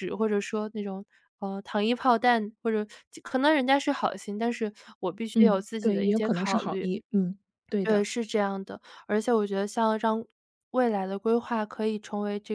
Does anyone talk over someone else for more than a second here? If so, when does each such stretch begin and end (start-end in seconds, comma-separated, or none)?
5.3-6.9